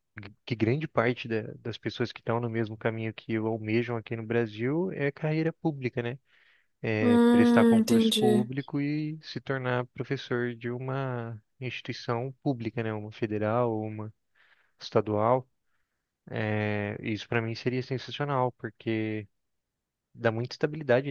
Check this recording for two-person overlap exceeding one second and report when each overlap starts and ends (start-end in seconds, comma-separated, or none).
7.0-8.5